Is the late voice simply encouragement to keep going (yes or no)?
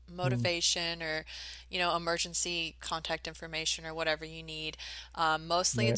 yes